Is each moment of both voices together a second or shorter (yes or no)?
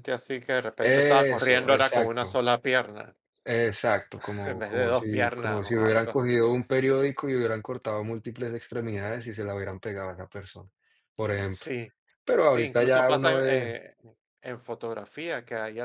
no